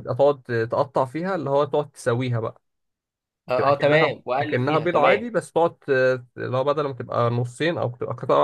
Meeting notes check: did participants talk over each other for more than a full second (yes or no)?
yes